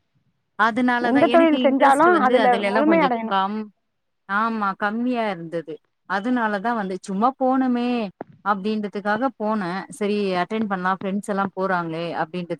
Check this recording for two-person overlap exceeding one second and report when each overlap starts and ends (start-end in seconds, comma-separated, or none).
1.1-3.3